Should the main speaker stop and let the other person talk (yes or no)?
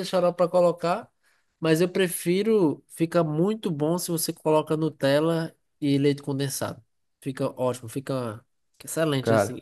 no